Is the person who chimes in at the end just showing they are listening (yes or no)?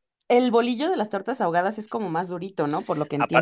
no